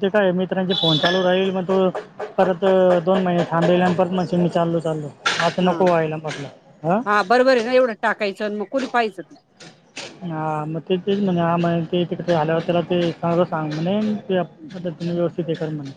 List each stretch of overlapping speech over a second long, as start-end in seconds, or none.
none